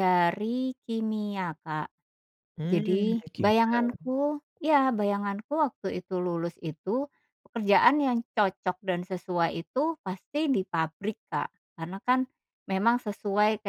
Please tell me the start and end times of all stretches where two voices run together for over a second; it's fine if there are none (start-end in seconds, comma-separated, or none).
2.7-4.1